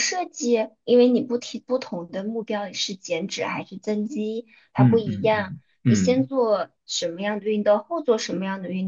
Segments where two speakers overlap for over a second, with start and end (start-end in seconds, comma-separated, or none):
4.8-6.3